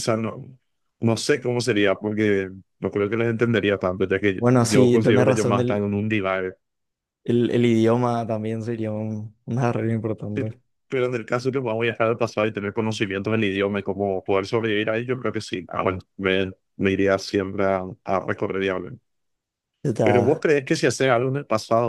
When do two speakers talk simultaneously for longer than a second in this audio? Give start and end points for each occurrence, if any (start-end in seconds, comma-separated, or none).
4.4-5.8